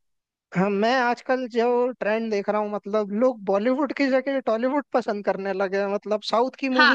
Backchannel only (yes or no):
no